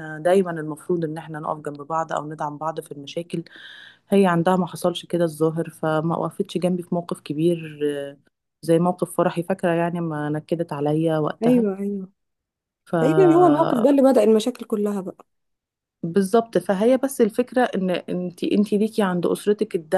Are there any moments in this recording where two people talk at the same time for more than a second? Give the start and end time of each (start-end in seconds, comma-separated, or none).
none